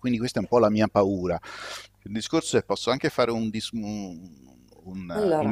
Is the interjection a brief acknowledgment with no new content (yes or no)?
yes